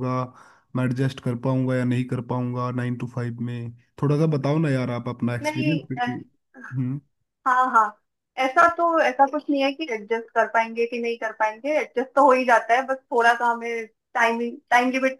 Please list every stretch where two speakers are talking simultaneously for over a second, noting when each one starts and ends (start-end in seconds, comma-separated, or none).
none